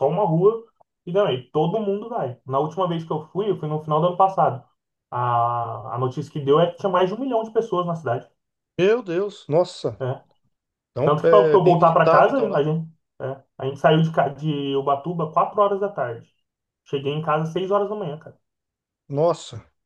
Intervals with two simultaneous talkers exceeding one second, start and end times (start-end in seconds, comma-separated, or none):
11.0-12.7